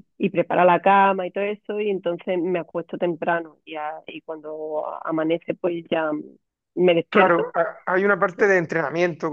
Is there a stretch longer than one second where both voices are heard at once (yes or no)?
no